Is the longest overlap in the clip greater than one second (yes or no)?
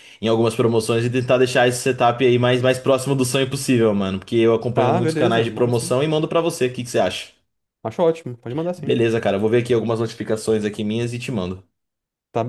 yes